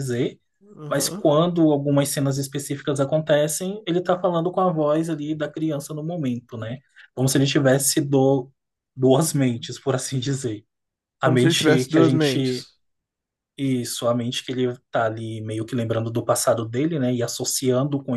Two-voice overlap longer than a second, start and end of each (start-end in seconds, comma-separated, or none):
11.2-12.7